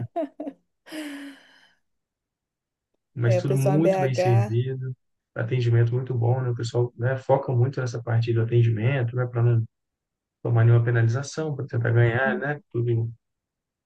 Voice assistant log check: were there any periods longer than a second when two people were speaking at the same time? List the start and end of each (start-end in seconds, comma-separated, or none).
3.2-4.6